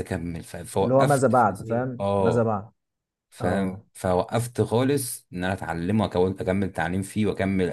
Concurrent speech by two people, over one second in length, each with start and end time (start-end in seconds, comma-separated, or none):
0.8-2.5